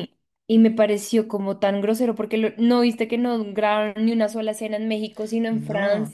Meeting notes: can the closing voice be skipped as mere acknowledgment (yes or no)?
no